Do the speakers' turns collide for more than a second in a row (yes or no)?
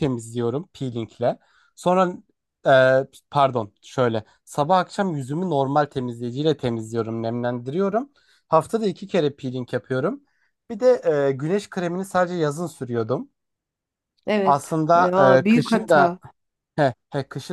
yes